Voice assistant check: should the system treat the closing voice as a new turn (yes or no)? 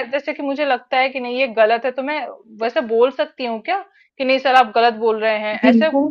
yes